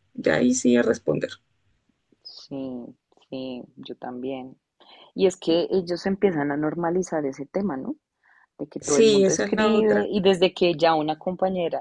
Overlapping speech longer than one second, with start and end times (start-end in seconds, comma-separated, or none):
8.8-10.1